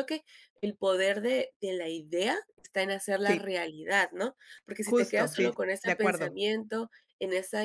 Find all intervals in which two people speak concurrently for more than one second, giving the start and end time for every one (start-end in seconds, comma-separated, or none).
4.8-6.4